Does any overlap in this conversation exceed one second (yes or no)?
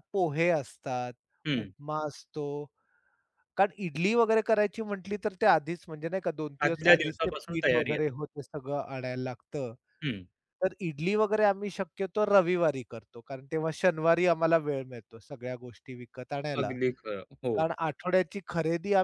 yes